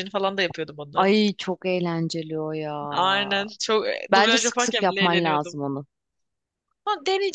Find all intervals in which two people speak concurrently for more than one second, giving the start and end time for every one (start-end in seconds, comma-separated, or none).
4.1-5.5